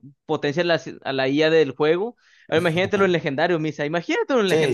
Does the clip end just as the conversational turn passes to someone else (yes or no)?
yes